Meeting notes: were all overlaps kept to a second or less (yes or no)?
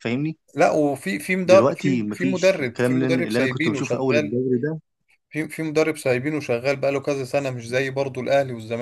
no